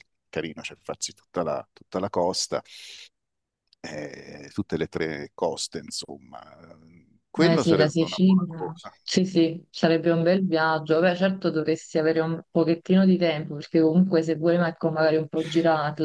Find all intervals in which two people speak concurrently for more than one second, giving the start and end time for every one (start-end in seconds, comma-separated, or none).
7.4-8.9